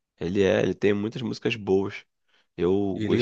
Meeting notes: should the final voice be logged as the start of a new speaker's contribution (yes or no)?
no